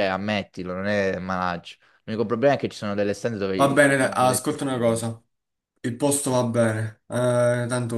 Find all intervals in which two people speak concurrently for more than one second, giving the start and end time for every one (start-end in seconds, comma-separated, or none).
3.6-5.0